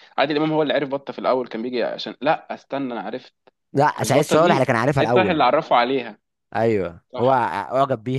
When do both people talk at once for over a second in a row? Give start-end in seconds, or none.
4.0-5.4